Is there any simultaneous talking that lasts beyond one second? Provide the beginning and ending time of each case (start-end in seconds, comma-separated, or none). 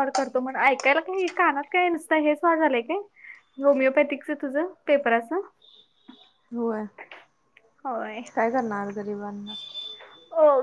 none